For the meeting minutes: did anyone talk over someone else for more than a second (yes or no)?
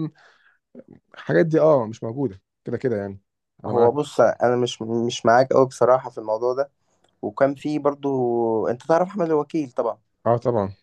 no